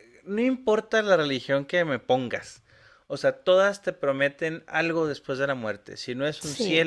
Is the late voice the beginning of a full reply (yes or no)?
no